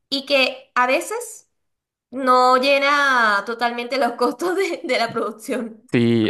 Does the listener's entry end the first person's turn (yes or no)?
yes